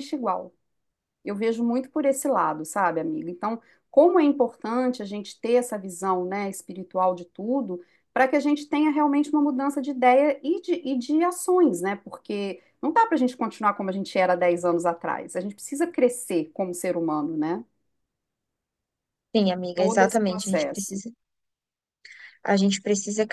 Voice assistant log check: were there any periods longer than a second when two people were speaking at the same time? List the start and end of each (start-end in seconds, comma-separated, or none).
19.7-20.9